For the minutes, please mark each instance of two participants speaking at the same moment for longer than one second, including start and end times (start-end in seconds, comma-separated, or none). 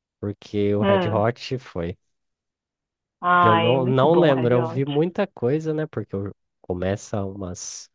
3.4-4.8